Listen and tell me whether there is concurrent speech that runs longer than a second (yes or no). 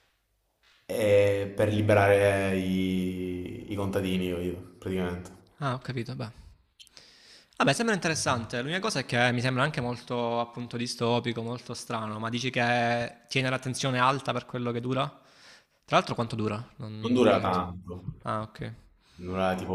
no